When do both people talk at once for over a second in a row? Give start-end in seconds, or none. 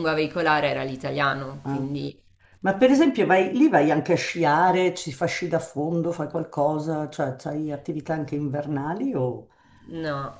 none